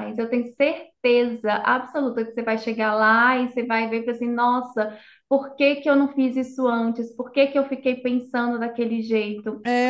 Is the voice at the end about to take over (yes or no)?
yes